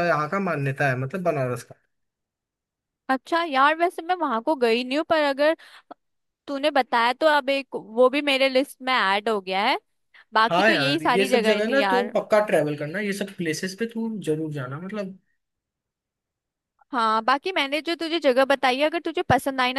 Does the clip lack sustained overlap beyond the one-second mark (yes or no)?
no